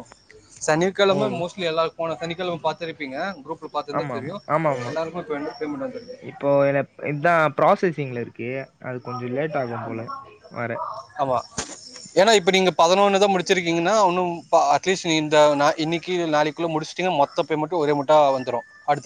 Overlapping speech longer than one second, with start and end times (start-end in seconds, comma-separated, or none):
none